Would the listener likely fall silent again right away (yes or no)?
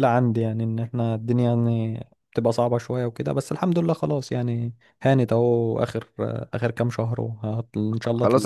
no